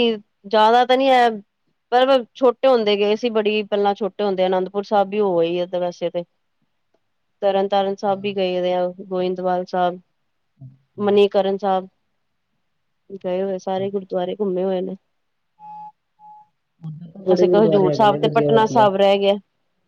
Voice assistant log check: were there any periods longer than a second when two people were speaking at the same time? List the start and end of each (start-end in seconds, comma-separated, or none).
17.3-18.9